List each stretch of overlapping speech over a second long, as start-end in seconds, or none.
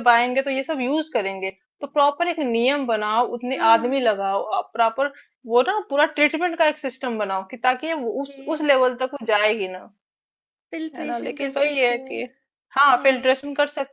10.9-12.2